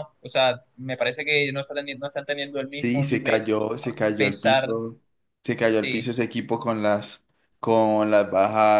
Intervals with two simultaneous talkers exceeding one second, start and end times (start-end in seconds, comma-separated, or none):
2.7-4.7